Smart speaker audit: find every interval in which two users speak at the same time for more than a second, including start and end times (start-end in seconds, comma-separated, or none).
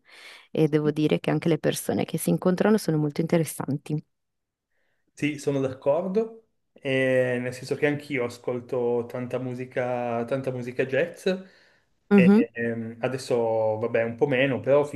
none